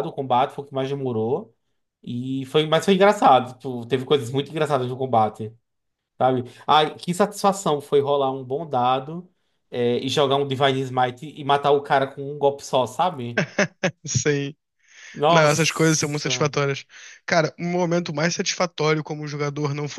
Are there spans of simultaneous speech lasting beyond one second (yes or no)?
yes